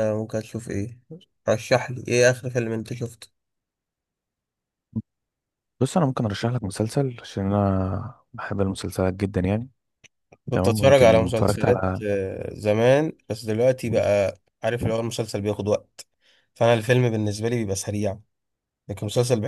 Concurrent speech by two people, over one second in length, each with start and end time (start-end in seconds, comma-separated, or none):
10.5-12.0